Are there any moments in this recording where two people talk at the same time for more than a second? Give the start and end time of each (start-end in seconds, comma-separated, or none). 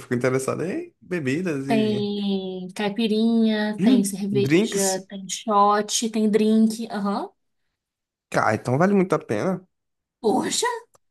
3.8-5.1